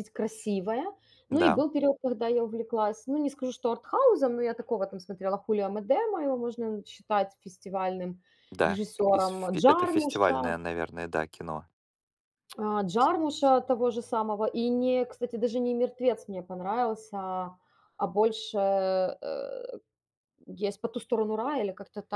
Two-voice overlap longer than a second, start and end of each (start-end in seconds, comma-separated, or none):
8.6-10.6